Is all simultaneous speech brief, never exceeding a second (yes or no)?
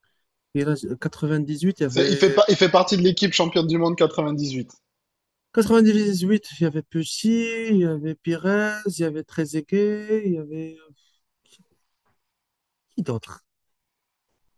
yes